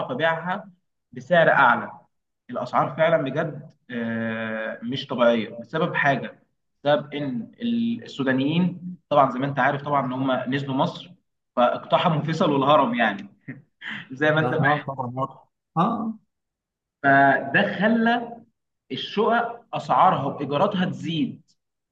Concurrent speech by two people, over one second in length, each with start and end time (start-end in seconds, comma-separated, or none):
none